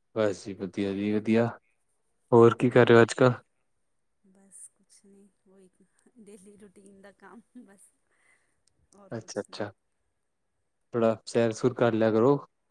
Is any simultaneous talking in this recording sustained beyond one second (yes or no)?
no